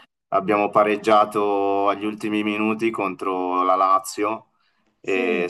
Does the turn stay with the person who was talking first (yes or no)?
yes